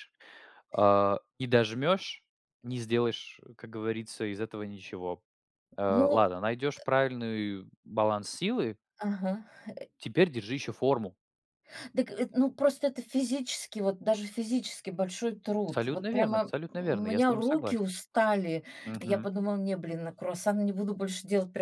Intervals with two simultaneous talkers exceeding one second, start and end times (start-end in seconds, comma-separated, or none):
15.7-17.9